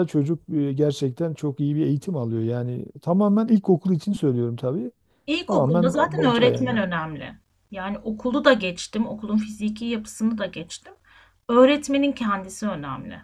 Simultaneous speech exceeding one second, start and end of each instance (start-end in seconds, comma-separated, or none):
5.5-6.8